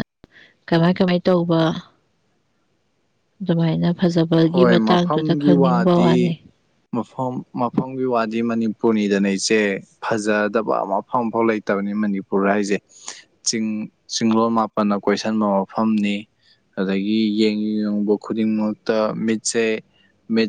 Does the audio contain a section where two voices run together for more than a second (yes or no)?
yes